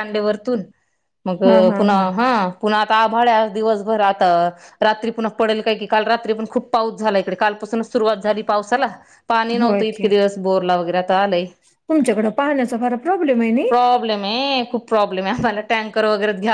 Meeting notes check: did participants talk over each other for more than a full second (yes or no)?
no